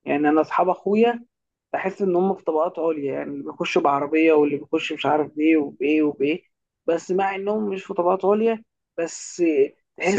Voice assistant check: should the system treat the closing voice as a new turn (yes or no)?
no